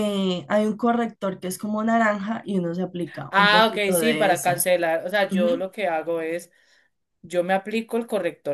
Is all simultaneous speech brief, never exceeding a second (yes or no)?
no